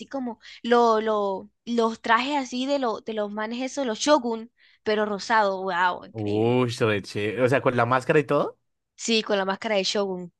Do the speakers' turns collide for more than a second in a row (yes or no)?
no